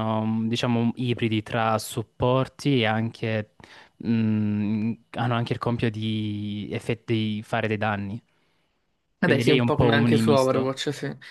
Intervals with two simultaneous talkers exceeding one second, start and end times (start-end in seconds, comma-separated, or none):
9.2-10.7